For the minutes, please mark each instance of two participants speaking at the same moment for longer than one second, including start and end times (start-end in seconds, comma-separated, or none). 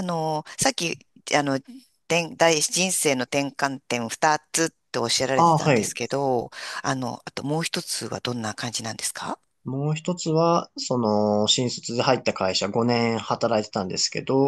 none